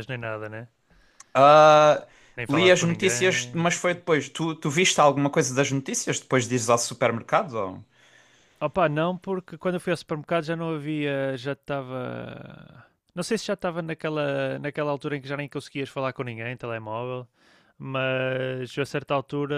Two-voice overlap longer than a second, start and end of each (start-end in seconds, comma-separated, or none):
2.5-4.0